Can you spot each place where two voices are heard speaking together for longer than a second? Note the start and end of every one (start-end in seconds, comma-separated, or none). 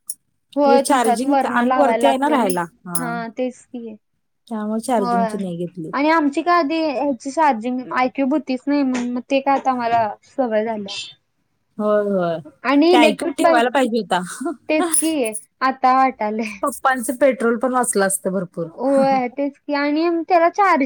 0.6-2.5